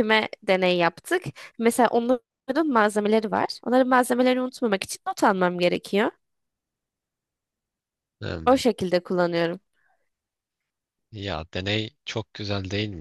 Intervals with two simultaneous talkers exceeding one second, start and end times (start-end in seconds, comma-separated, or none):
none